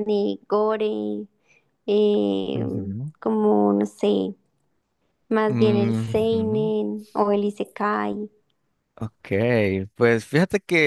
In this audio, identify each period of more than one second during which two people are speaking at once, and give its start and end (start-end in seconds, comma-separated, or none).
5.5-6.7